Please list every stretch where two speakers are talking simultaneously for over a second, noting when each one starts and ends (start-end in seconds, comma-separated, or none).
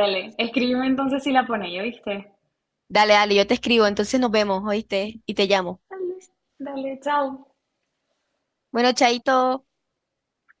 none